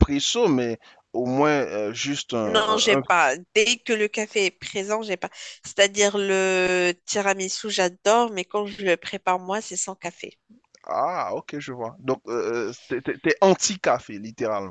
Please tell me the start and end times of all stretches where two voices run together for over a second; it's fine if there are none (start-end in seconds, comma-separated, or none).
none